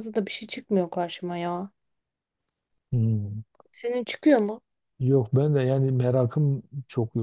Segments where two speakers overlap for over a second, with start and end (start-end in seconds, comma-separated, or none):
none